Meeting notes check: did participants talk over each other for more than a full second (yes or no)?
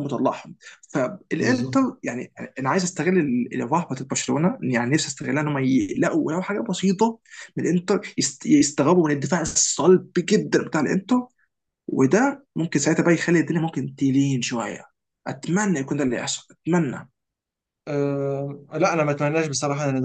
no